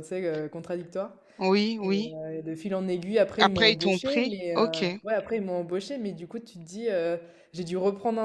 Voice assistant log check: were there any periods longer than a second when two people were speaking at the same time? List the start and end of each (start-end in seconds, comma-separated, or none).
3.4-4.8